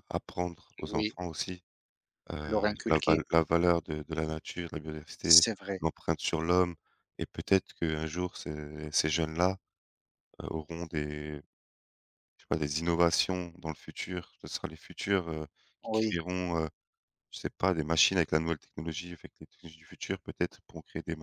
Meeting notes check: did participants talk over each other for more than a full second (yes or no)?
no